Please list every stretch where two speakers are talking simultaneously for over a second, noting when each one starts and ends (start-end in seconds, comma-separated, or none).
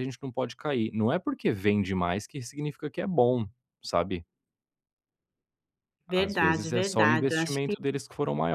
6.2-7.7